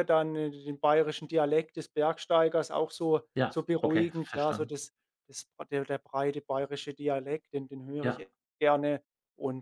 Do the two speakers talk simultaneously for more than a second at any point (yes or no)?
yes